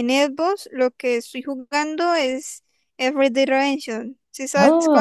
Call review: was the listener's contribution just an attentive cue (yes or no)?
no